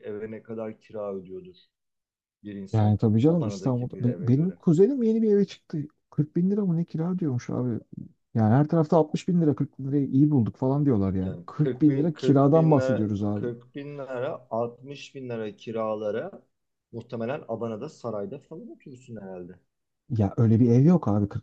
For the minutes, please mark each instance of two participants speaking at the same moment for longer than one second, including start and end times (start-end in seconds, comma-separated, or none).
2.7-4.6, 11.2-13.5